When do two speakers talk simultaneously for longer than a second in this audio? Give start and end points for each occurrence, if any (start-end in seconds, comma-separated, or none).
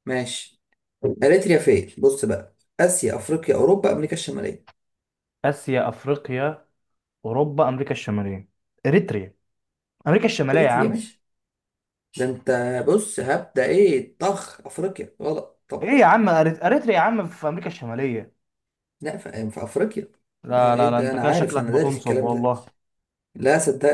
20.6-22.5